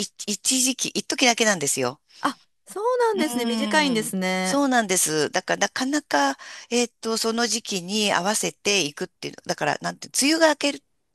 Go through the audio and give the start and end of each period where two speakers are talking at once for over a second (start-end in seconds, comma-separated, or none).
3.1-4.6